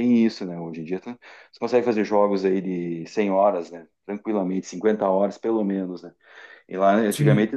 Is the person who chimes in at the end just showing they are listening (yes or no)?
yes